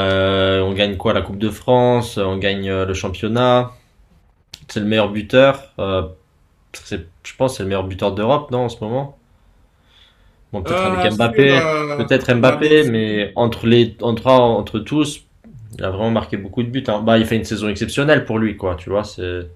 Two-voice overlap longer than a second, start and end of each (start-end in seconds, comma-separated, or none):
10.7-13.1